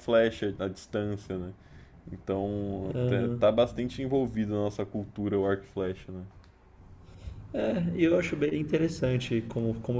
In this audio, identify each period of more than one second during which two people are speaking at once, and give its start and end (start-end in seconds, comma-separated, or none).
none